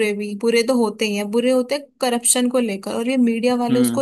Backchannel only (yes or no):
yes